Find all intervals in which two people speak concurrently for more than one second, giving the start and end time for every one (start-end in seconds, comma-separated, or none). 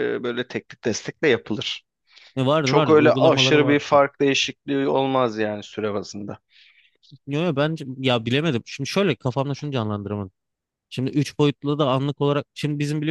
2.6-4.0